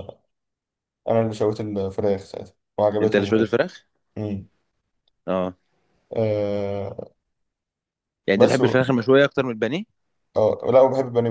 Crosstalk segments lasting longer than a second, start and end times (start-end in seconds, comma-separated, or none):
none